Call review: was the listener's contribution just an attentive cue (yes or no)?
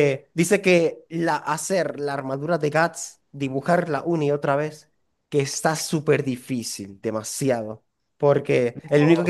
yes